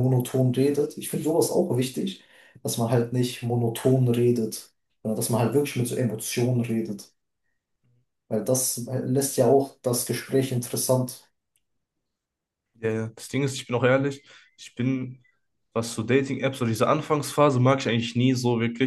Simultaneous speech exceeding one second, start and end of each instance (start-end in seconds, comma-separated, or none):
none